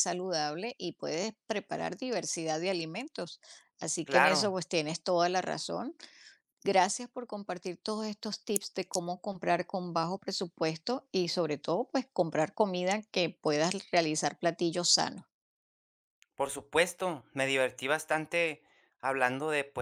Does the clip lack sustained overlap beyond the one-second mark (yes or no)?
yes